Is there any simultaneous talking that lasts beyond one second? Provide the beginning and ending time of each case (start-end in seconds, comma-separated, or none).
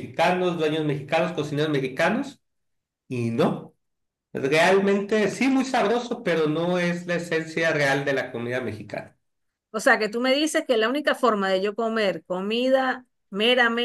none